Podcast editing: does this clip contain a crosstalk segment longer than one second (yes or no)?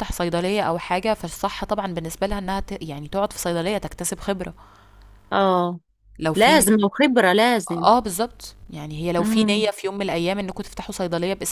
no